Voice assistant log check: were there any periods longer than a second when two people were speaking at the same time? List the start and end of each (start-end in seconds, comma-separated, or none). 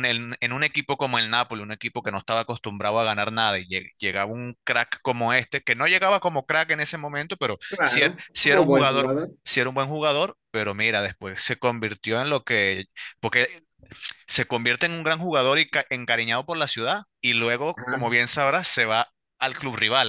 7.7-9.3